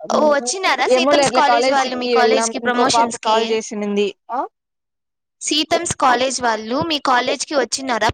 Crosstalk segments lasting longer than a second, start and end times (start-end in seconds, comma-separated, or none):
0.9-3.4